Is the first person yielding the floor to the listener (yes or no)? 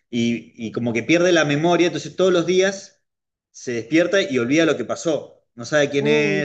no